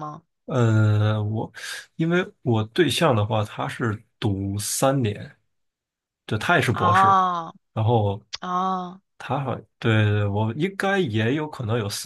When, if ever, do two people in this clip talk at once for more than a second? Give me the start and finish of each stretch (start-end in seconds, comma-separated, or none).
none